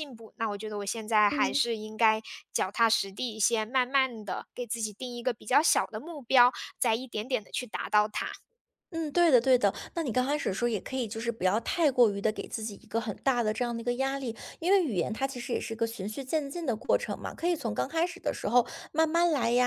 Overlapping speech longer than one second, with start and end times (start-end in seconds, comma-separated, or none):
none